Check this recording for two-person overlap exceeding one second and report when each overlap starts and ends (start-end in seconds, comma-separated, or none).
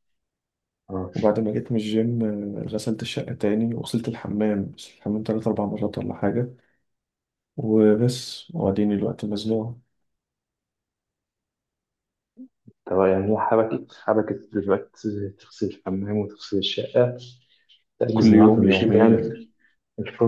18.1-19.3